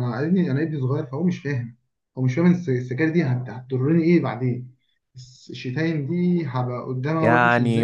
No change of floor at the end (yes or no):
no